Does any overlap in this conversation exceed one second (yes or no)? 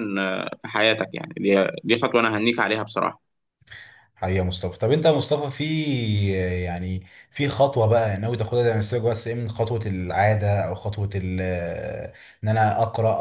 no